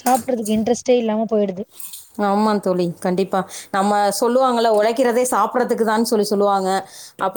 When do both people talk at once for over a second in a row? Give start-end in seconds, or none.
none